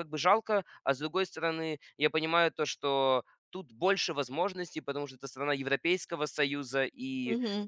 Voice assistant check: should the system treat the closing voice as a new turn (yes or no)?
no